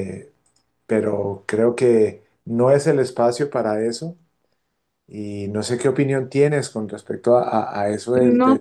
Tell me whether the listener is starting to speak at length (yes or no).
no